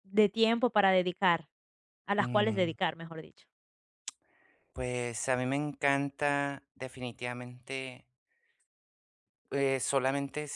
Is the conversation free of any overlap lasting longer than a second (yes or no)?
yes